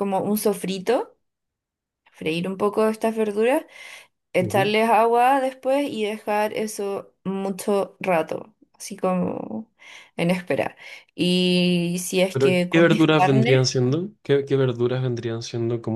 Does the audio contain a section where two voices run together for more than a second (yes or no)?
yes